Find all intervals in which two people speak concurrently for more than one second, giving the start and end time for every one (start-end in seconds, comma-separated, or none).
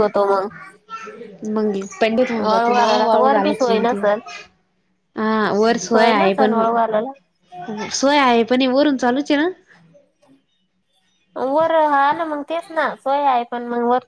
2.5-4.2